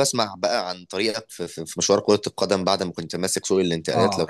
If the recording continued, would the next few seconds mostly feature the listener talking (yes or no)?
yes